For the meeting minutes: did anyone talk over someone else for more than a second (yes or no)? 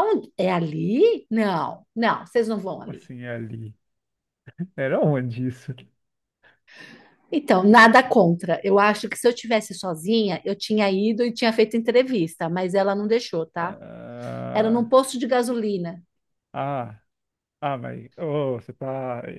no